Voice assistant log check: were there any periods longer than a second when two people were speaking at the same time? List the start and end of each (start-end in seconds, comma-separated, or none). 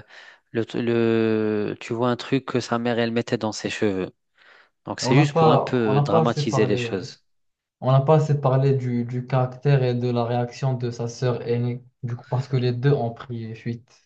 5.0-7.0